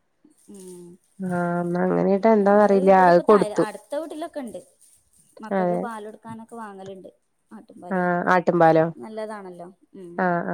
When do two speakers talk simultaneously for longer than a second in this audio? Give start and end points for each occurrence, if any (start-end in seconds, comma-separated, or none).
none